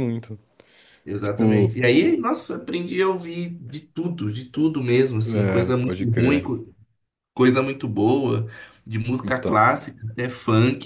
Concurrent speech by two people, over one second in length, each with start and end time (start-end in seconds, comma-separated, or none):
5.3-6.5